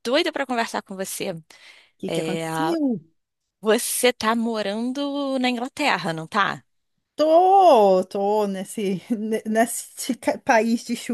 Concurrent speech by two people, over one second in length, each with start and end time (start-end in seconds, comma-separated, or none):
none